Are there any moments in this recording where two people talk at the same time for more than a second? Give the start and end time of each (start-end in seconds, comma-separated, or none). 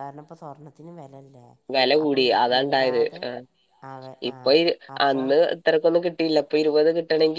none